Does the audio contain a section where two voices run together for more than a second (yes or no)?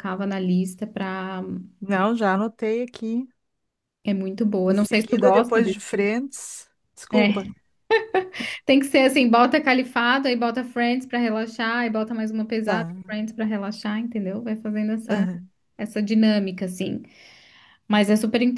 yes